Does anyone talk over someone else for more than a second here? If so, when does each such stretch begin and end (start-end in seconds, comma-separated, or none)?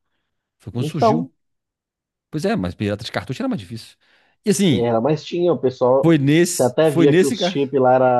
6.0-7.6